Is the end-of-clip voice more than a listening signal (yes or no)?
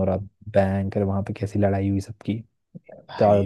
no